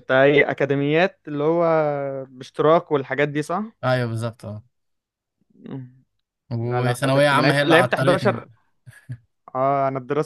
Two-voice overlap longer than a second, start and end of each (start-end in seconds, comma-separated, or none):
6.6-8.5